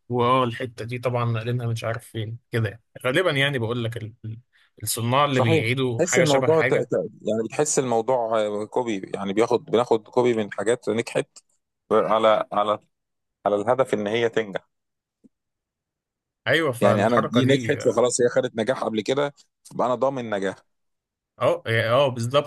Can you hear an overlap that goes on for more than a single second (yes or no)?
yes